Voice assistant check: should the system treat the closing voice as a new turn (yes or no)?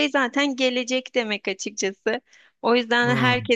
no